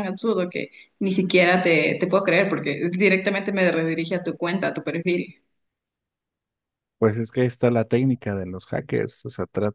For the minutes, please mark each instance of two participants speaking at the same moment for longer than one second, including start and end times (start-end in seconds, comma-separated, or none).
none